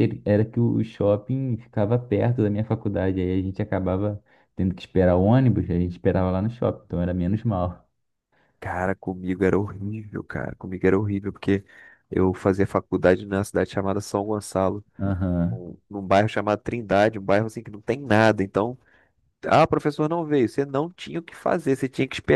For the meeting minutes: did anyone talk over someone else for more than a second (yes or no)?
no